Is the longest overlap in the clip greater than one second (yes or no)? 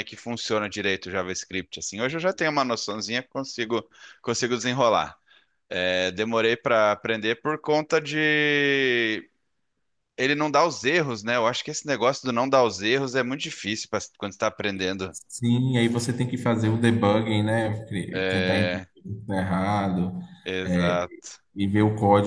no